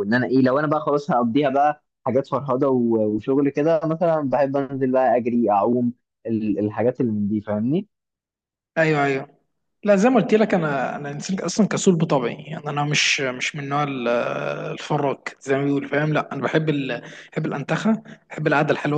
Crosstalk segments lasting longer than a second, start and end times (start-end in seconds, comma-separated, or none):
none